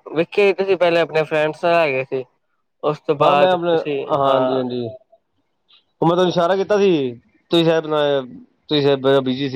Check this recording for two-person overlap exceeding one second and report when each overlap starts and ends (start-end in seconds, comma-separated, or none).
none